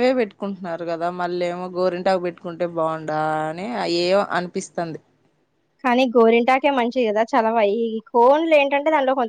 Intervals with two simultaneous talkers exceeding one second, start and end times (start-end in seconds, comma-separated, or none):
none